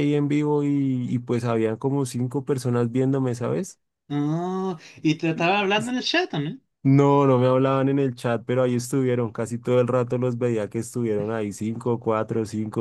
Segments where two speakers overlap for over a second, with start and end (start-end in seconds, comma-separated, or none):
none